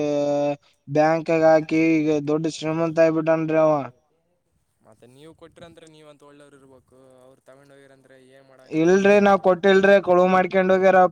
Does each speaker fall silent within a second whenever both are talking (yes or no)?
yes